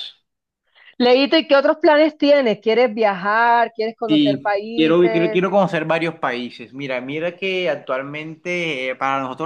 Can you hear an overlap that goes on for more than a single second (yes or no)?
yes